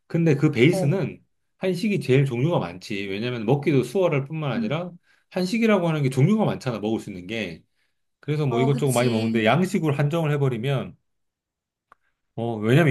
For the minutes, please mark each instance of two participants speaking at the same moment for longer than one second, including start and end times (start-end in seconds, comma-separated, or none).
8.5-9.8